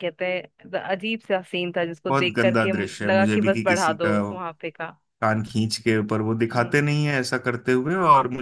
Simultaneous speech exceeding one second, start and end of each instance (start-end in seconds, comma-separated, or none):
2.1-4.2